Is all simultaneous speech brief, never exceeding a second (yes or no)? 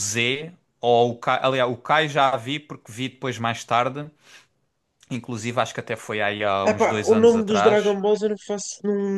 no